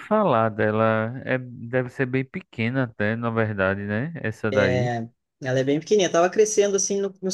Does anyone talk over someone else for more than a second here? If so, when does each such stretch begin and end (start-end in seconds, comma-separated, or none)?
none